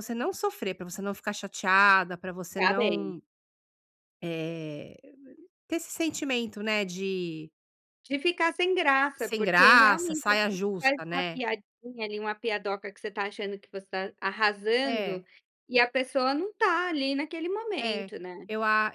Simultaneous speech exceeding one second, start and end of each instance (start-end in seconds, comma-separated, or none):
9.2-11.4